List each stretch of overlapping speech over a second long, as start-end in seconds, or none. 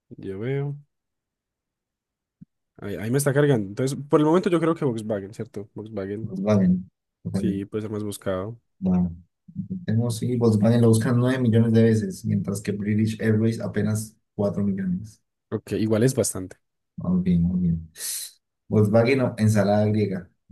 none